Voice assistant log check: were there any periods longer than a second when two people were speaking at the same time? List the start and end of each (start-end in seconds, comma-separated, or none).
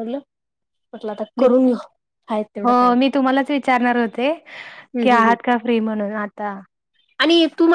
none